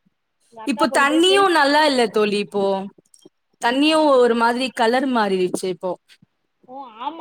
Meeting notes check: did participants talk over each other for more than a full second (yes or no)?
yes